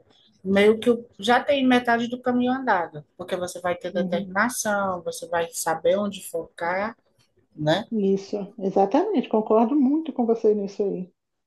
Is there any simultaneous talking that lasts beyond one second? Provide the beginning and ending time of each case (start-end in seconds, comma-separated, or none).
none